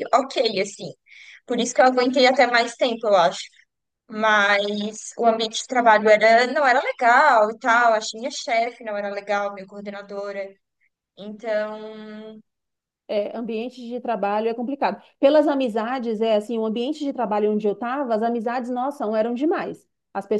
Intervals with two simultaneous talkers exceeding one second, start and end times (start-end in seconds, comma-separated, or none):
none